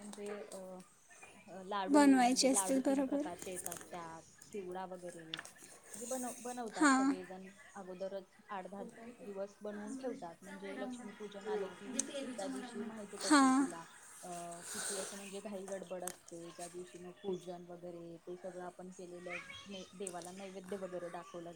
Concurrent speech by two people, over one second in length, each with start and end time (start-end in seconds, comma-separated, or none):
1.9-3.2